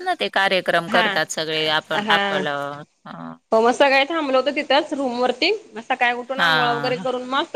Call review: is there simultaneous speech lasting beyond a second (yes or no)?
no